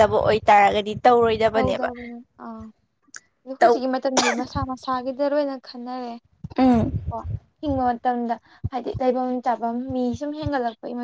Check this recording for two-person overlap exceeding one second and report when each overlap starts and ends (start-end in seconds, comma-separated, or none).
none